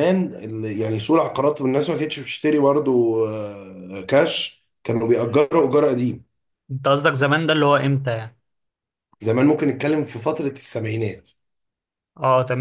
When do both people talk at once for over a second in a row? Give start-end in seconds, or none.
none